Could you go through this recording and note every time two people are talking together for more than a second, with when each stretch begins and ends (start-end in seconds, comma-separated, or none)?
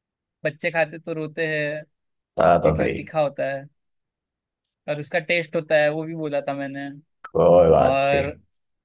none